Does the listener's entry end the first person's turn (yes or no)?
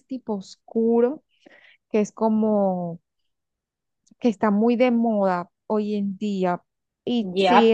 yes